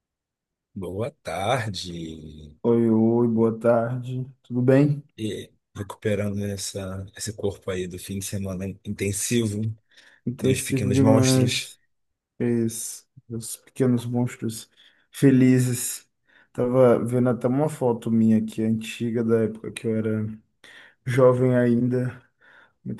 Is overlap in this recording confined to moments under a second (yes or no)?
no